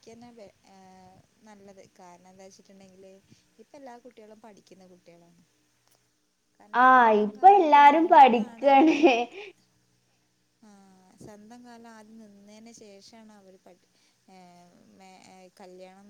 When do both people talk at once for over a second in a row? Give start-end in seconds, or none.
6.8-8.7